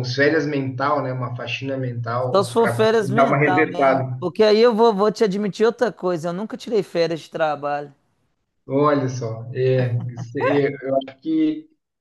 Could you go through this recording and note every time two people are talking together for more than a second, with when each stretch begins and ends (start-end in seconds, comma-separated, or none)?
2.3-4.2